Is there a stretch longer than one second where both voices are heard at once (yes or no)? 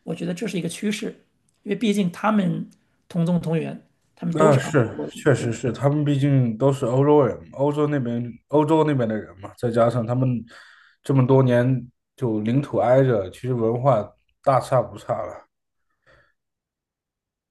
yes